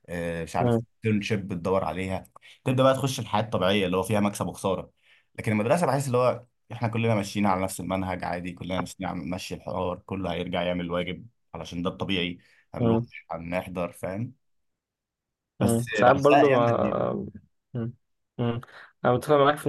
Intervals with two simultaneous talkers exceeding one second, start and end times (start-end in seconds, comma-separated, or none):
15.6-17.1